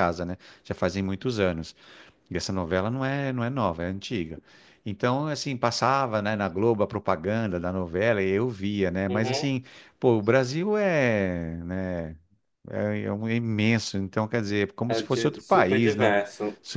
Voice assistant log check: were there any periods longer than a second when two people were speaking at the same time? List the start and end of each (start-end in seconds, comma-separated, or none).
14.9-16.1